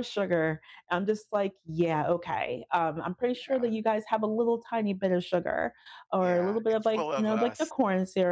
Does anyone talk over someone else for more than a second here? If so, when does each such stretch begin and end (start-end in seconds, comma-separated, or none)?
6.2-7.7